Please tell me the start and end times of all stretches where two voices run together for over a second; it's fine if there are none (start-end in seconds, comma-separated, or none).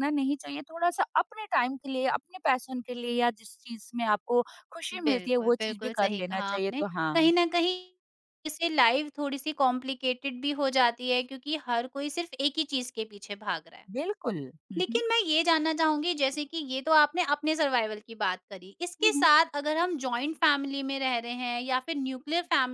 4.9-7.2